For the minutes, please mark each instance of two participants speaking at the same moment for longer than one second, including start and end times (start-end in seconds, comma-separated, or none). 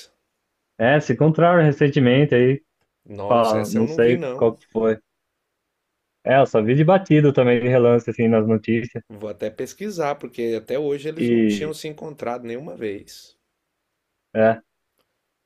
3.3-4.5